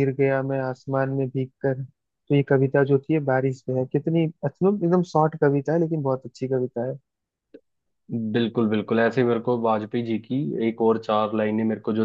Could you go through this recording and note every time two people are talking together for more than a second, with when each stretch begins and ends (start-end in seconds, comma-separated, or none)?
none